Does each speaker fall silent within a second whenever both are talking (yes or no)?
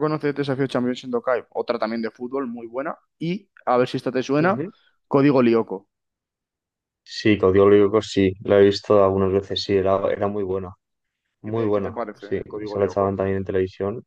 no